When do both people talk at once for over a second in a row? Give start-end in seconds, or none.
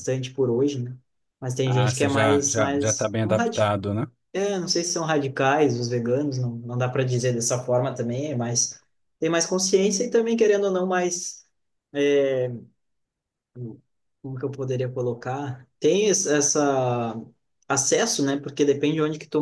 1.6-3.7